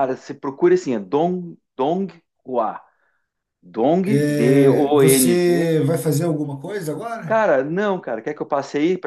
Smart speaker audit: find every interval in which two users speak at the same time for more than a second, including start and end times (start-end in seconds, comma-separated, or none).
4.0-5.7